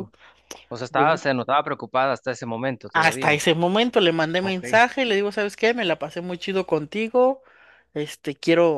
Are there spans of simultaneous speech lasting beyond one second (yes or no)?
no